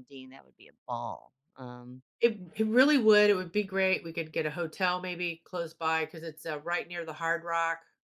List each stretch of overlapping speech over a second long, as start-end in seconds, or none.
none